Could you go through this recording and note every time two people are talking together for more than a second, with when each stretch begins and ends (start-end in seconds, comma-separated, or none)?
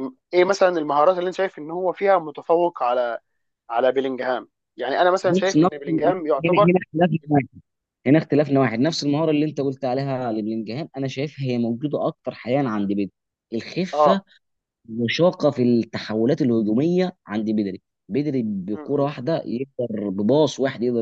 none